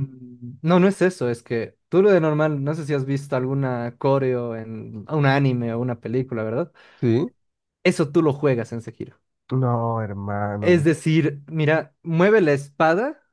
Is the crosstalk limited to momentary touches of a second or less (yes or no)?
yes